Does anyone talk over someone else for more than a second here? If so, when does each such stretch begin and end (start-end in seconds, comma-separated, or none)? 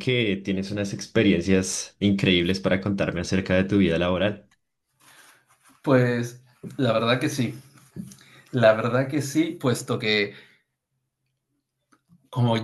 none